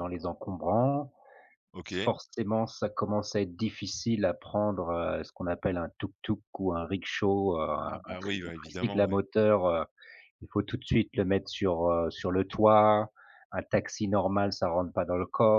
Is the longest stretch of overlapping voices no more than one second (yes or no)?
no